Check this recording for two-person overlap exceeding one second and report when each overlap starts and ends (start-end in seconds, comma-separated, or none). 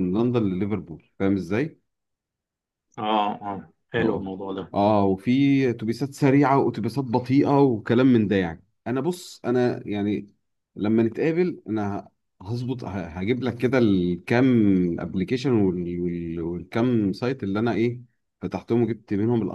none